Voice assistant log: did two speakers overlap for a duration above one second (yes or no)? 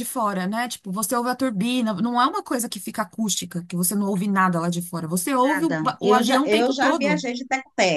yes